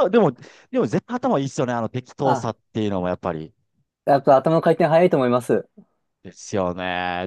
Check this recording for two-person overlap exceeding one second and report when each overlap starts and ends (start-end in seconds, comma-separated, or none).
none